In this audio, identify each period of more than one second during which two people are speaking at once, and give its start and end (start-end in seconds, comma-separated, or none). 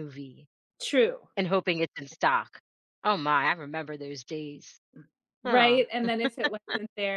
none